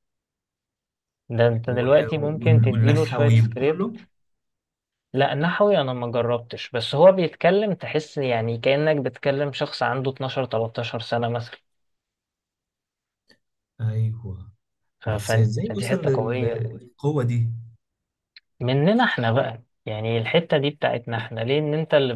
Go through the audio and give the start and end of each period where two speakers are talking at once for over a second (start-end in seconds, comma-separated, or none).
1.7-4.0, 15.1-16.6